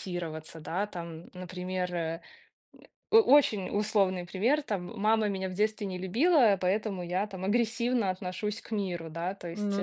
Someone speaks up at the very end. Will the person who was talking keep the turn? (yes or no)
yes